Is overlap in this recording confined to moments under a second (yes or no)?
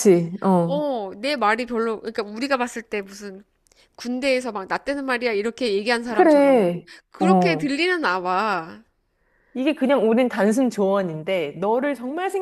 no